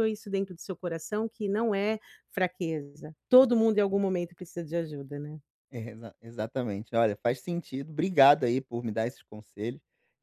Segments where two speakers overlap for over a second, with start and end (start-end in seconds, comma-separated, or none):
none